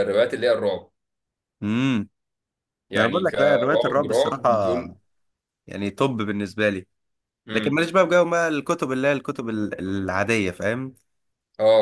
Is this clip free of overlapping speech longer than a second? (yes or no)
no